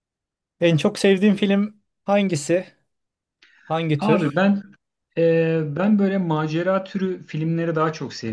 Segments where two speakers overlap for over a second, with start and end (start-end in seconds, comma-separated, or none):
none